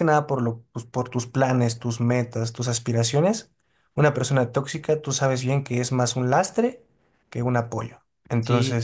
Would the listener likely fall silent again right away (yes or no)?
no